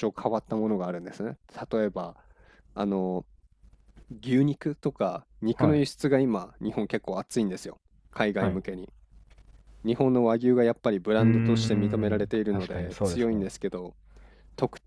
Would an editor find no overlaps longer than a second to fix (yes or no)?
no